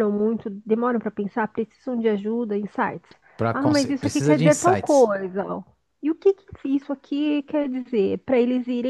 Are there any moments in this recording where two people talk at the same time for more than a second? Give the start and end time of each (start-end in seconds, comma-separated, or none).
3.5-5.1